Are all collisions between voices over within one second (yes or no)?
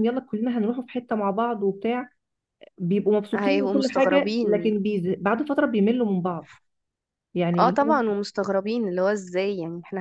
no